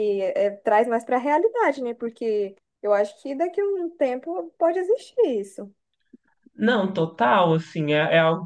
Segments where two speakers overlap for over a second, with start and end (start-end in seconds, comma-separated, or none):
none